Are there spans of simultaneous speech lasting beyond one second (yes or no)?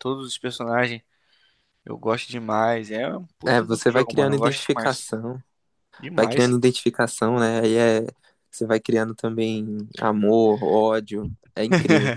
yes